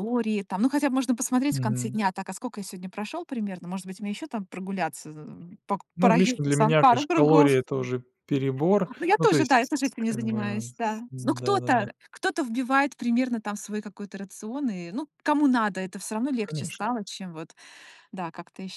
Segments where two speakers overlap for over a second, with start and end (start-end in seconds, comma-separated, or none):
6.0-7.6, 9.0-11.9